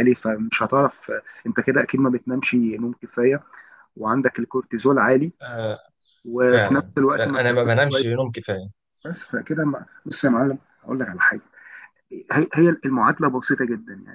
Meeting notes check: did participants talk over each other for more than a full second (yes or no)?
yes